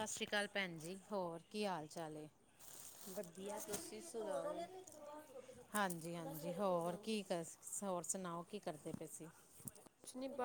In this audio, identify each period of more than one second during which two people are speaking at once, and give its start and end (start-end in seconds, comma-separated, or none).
none